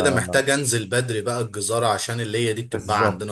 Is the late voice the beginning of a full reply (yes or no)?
yes